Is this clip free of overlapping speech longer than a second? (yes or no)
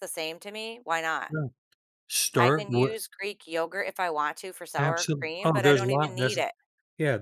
no